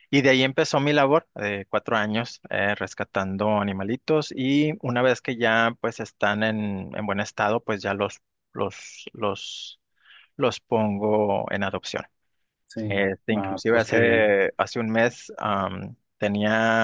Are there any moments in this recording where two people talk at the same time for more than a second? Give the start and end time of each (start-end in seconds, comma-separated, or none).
12.9-14.3